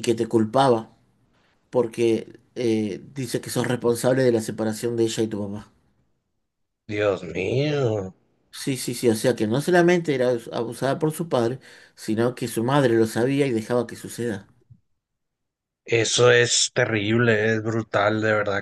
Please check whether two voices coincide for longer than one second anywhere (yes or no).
no